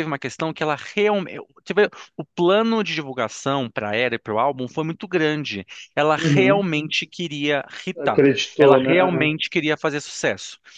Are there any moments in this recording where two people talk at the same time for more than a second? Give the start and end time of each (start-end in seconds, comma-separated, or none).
8.0-9.3